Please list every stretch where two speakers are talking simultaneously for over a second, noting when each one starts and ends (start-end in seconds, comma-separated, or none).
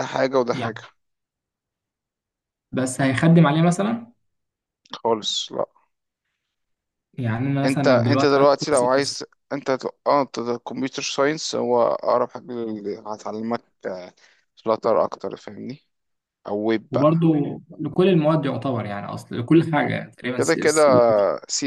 7.6-9.2